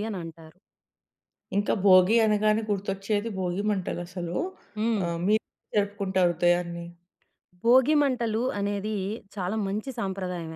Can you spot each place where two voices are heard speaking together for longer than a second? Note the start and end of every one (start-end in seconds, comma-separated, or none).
none